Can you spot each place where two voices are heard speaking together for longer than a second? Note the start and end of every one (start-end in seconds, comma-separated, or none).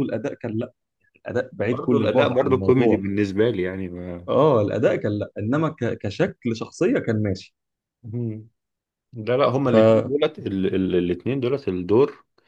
1.6-3.0